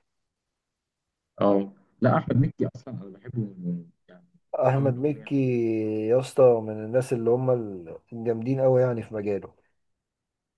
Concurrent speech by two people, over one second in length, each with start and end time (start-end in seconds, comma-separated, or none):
none